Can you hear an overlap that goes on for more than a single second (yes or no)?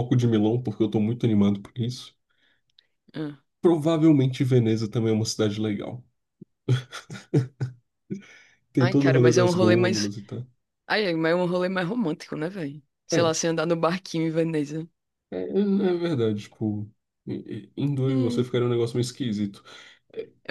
yes